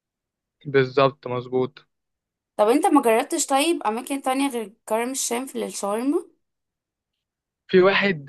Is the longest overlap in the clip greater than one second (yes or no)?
no